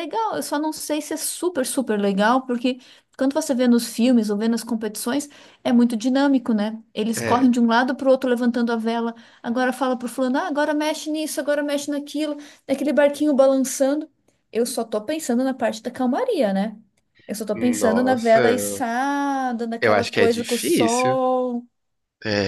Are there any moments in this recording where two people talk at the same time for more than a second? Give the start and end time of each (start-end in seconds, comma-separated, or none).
17.5-18.8, 19.8-21.2